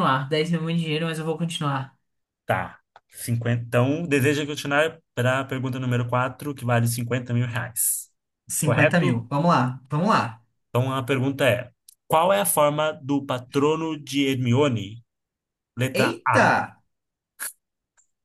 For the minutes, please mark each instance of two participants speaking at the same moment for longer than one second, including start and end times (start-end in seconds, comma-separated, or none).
none